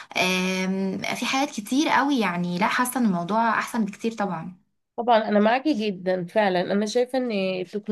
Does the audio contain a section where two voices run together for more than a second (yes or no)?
no